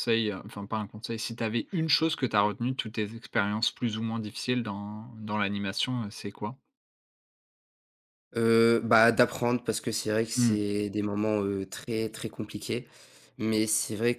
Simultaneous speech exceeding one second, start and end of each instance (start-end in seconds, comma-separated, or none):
none